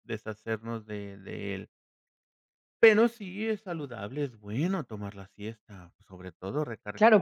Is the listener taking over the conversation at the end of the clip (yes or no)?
yes